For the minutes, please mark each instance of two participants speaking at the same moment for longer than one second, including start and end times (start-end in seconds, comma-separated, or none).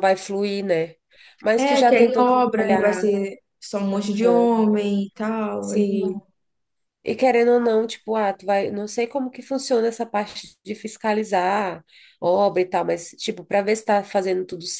1.6-3.1